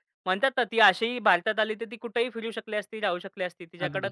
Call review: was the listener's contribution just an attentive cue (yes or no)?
yes